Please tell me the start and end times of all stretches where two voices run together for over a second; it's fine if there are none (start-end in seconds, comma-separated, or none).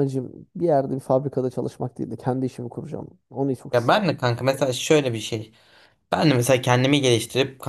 none